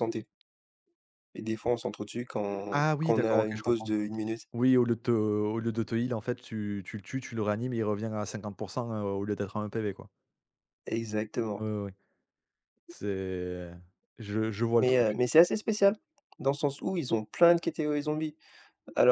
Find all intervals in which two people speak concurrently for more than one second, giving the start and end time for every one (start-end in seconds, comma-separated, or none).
2.7-4.0